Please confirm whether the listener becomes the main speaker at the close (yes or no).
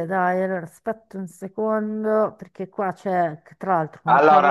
yes